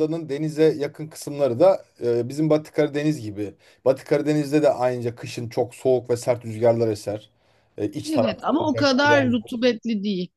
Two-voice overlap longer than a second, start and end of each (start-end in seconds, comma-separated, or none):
8.1-9.3